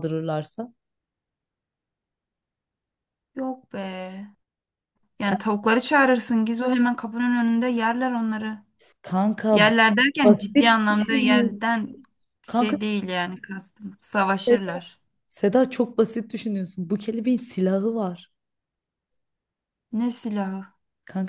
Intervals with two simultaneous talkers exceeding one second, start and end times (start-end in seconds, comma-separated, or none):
10.2-11.6